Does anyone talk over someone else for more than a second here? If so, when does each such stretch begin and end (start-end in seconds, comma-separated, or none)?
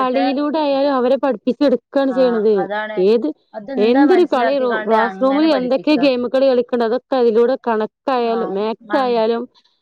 3.9-6.1